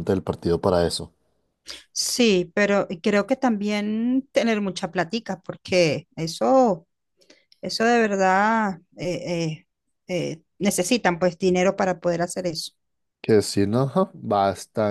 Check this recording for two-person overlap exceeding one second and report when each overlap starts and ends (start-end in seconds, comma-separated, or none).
none